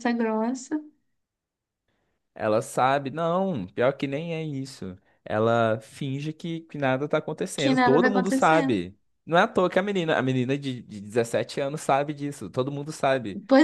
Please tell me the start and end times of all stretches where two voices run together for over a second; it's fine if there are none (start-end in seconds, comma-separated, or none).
7.5-8.8